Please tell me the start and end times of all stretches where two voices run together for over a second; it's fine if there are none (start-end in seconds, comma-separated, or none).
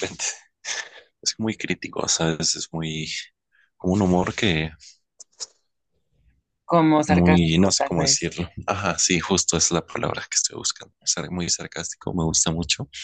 7.1-8.3